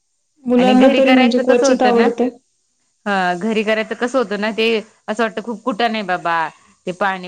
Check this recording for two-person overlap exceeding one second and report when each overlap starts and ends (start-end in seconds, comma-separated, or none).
0.6-2.1